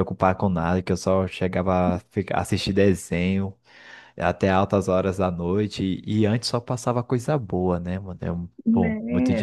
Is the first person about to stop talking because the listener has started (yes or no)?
yes